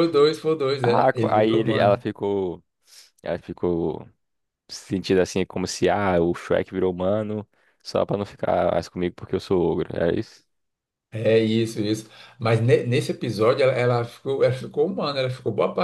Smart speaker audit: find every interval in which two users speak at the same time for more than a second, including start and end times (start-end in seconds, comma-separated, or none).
0.8-2.0